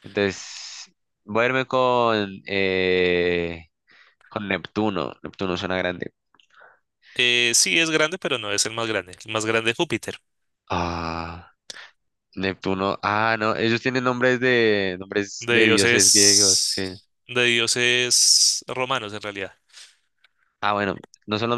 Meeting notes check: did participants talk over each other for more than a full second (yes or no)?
yes